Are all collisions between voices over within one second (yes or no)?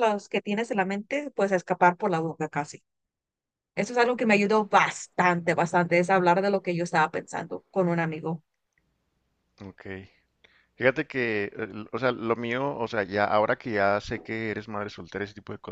yes